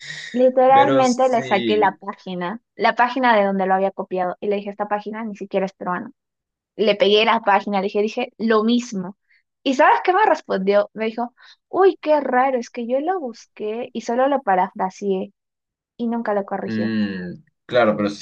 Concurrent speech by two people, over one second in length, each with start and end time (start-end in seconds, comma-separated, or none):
0.7-2.0